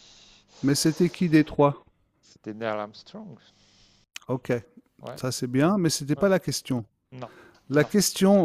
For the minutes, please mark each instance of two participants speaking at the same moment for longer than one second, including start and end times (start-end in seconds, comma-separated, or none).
none